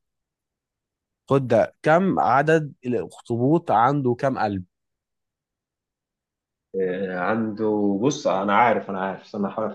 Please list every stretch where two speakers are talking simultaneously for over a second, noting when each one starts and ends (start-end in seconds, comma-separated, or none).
none